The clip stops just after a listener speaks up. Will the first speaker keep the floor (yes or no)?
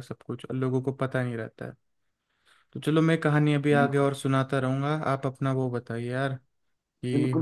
no